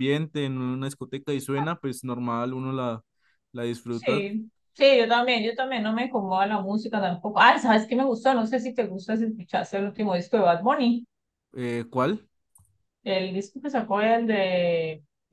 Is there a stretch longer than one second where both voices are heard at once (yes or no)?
no